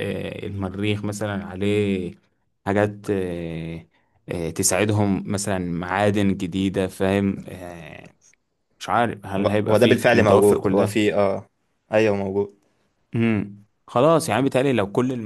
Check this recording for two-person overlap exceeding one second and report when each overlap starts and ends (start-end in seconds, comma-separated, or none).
9.4-11.0